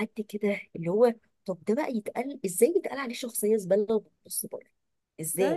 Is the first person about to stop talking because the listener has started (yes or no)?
yes